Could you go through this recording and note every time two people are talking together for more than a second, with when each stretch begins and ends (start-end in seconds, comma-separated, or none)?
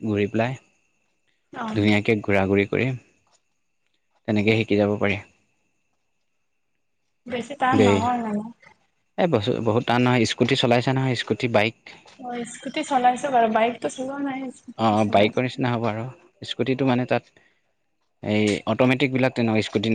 none